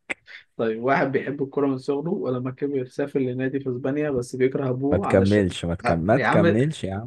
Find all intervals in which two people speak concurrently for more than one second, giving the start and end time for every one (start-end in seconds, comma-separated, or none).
4.9-6.5